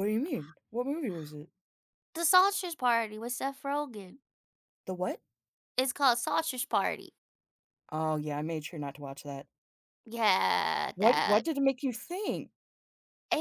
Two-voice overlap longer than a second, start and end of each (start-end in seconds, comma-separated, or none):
none